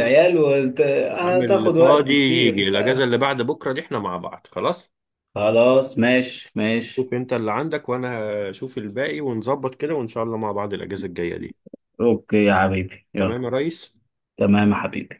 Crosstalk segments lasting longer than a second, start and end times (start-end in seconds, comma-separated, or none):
1.2-3.0